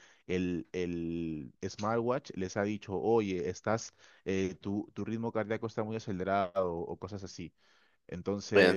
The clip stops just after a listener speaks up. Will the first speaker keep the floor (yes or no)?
no